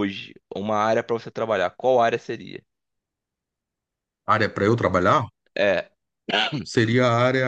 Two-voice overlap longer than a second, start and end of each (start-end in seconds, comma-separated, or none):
none